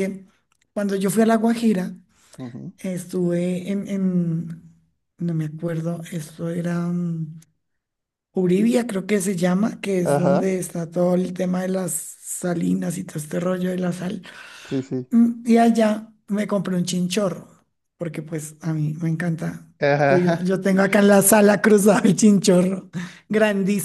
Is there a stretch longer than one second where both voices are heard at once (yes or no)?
no